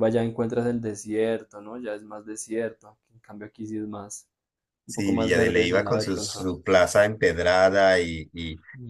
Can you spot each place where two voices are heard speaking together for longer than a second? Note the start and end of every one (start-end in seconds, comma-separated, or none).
4.9-6.5